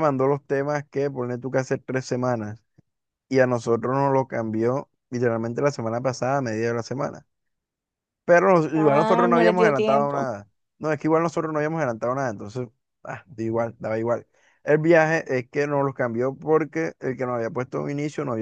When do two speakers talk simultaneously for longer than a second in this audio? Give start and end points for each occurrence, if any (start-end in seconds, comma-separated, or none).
8.7-10.3